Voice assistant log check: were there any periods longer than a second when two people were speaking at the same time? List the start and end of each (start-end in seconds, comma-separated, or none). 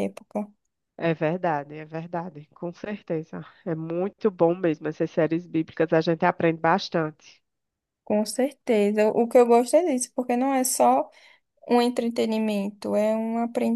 none